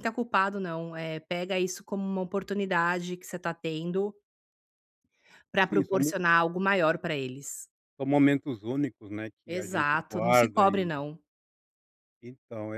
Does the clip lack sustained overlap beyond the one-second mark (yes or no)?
no